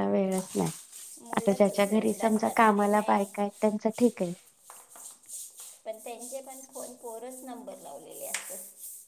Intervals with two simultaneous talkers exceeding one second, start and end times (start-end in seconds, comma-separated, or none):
none